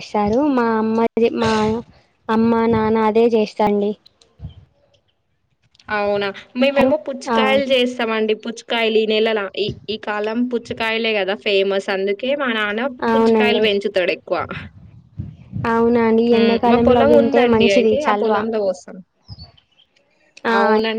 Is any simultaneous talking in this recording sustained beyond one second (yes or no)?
yes